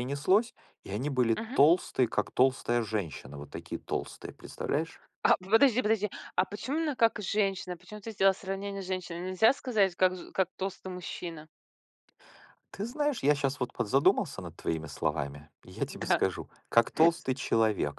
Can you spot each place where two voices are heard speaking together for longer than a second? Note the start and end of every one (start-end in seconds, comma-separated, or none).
none